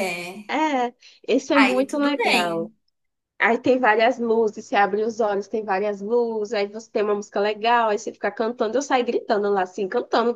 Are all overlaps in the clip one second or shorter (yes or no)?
no